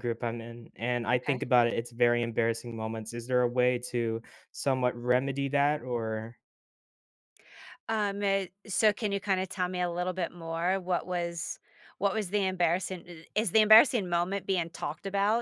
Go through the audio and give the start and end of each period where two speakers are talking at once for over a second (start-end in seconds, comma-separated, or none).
none